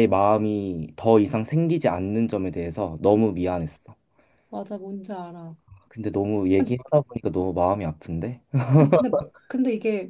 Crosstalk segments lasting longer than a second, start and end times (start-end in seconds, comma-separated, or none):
none